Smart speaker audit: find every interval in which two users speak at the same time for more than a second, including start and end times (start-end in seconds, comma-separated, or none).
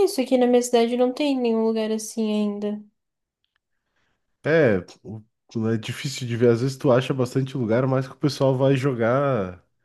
none